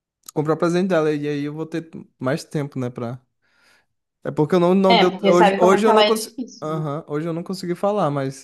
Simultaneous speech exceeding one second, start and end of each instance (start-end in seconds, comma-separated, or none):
4.9-6.8